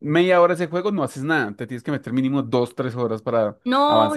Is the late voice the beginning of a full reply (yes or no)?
yes